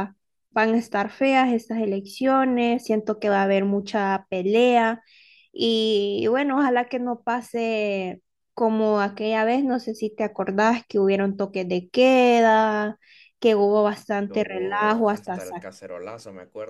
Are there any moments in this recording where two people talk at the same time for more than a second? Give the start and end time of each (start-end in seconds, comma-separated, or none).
14.3-15.7